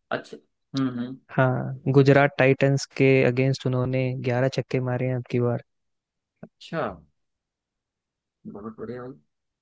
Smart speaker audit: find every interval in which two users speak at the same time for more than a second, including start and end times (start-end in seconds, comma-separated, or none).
none